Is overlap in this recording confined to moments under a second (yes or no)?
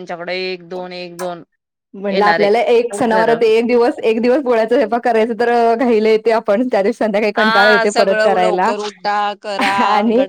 no